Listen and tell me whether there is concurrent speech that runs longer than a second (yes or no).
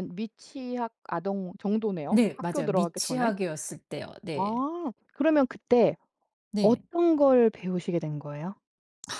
yes